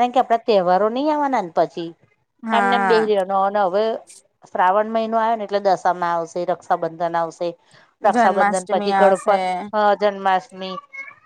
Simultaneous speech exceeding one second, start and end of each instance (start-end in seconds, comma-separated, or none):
8.1-9.4